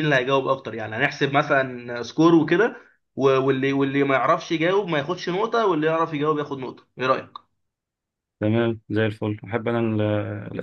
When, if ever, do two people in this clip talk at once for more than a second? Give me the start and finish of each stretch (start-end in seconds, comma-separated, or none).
none